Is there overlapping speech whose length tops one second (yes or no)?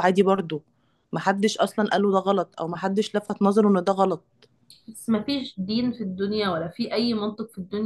no